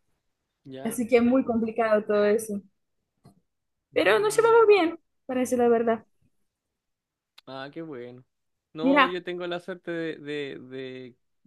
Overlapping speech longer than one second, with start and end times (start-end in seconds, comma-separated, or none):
none